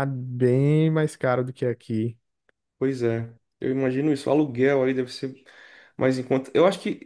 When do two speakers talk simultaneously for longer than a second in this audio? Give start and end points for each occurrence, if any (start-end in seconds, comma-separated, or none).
none